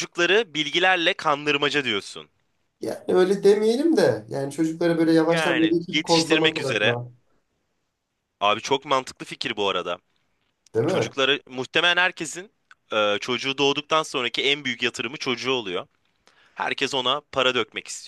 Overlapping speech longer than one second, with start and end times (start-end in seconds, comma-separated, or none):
5.3-7.0